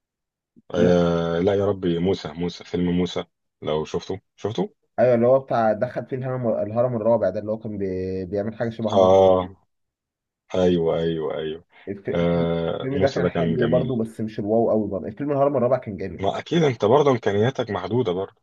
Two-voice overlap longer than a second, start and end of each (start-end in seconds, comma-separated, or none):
12.1-14.0